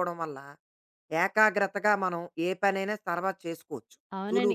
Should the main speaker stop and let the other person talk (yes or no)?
yes